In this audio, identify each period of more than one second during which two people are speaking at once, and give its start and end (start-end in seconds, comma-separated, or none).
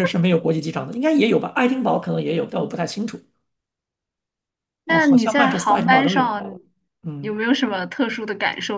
4.9-6.3